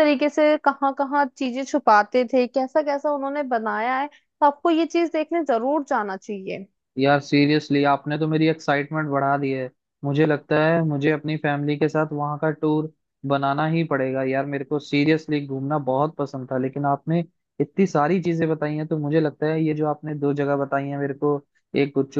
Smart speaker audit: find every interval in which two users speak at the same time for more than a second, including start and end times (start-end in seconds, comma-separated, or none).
none